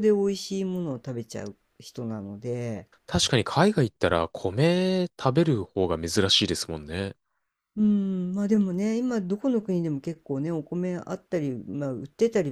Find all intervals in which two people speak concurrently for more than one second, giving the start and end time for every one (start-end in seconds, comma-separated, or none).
none